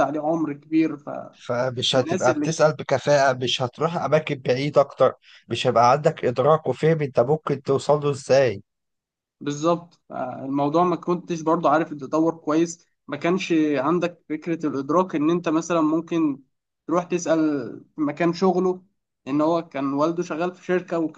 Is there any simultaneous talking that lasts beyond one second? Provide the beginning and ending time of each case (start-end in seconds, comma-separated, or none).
none